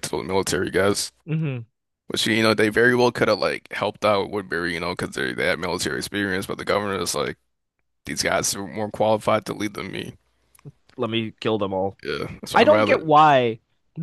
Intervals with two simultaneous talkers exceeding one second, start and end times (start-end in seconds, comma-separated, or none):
none